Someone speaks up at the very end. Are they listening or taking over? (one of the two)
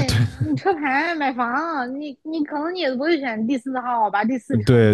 taking over